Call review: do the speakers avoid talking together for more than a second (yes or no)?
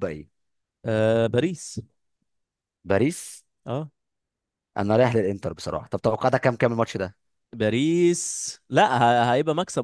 yes